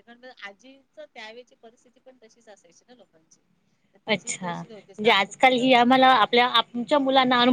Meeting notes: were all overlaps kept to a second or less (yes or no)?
no